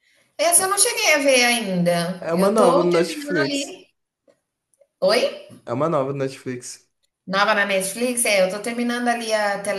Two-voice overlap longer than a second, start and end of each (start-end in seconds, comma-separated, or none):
2.2-3.8